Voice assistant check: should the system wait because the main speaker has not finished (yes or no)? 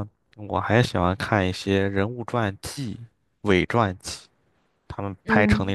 yes